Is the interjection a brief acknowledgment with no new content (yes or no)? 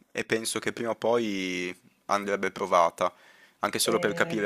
yes